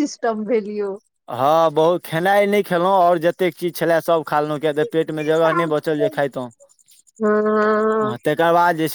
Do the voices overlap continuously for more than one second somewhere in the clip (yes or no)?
no